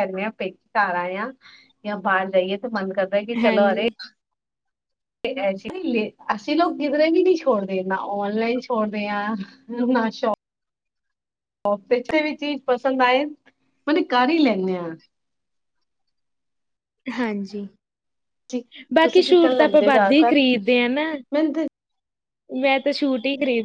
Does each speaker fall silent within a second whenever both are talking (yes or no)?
no